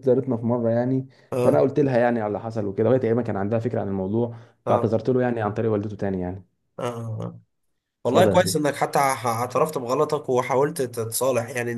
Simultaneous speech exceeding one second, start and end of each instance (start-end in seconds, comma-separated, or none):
none